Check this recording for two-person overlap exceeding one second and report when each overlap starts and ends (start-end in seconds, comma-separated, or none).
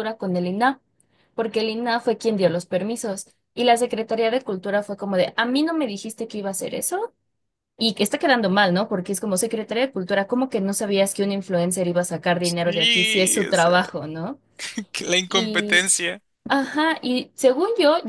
12.4-13.8